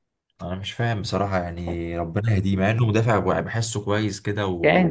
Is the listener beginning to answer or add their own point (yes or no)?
yes